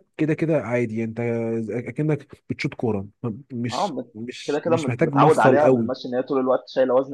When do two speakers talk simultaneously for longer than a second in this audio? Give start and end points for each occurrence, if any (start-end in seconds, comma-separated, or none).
3.7-5.9